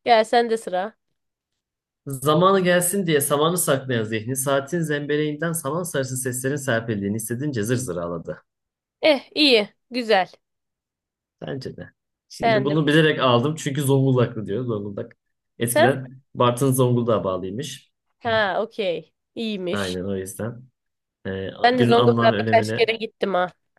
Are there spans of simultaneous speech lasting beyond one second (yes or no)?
yes